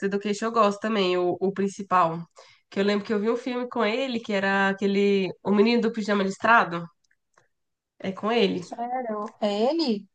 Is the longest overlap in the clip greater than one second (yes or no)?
no